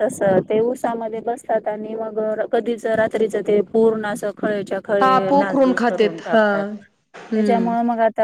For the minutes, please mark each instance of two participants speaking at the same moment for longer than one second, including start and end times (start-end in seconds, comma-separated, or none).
5.0-6.4